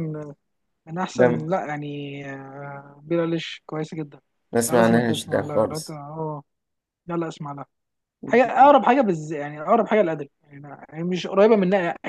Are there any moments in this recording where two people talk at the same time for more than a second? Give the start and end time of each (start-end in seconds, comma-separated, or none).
4.7-5.9